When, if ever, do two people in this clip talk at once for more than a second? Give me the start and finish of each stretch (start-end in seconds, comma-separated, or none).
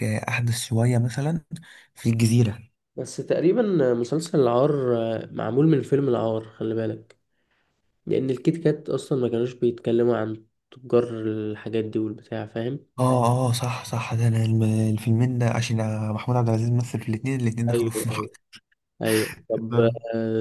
none